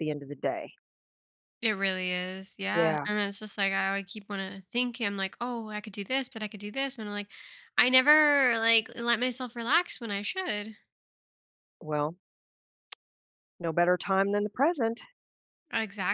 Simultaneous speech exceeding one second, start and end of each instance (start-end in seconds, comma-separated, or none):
none